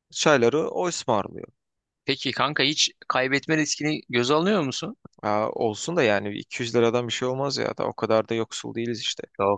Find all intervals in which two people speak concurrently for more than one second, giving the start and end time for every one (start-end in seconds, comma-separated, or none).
none